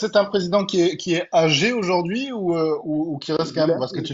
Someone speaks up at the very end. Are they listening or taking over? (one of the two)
listening